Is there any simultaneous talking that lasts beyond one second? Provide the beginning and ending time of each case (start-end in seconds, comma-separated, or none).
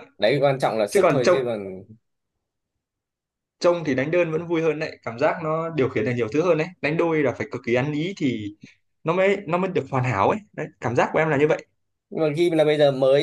none